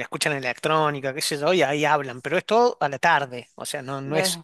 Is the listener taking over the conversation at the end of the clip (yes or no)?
no